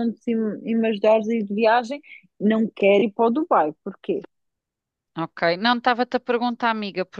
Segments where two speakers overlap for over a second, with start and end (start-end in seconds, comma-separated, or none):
none